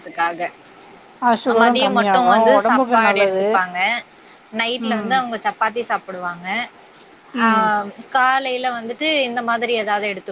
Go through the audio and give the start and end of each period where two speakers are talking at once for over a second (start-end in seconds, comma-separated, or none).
1.5-3.4